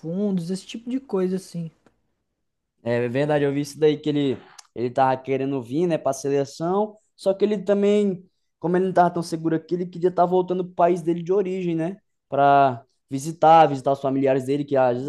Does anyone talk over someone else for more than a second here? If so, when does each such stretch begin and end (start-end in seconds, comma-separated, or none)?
none